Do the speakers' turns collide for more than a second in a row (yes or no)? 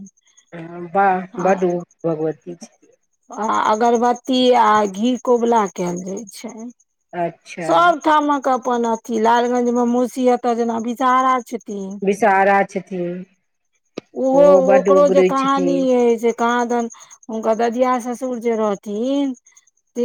yes